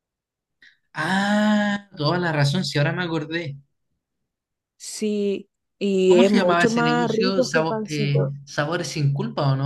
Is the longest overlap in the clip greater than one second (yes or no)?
yes